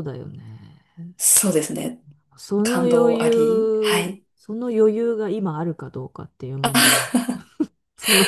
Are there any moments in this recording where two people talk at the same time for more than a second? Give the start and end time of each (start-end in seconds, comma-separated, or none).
2.6-4.2